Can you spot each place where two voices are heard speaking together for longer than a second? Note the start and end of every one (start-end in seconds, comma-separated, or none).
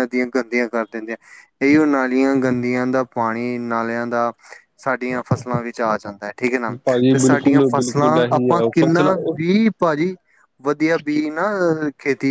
7.1-9.5